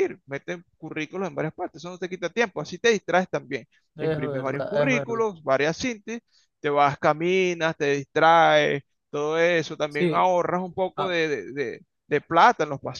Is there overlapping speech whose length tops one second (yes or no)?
yes